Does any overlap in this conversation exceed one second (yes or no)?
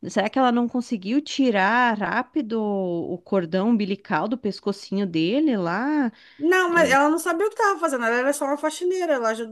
no